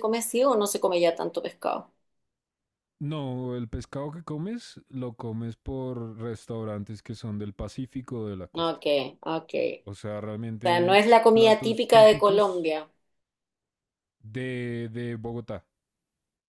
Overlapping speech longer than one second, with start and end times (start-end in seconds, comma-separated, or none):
10.7-12.7